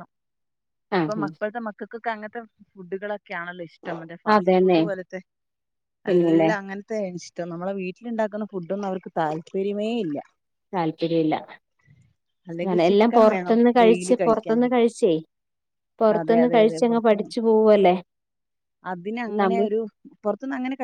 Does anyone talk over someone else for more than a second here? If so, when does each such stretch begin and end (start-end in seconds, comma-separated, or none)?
12.7-14.8